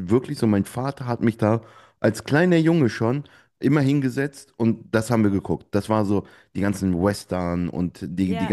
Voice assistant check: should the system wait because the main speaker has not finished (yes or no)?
yes